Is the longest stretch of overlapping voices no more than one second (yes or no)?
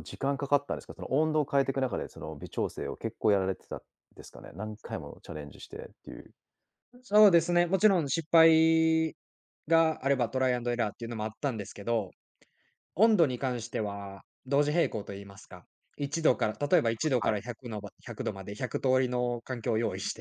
yes